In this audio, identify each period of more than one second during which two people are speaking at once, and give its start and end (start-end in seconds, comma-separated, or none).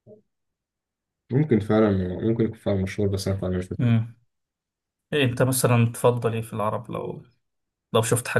none